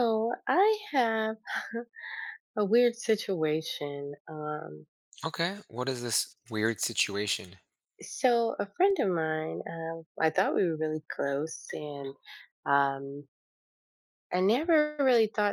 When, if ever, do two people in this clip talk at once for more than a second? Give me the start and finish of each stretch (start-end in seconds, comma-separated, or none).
none